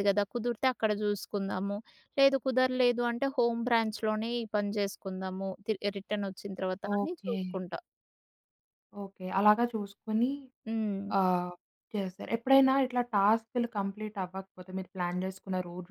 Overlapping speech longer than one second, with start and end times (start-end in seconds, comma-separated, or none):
none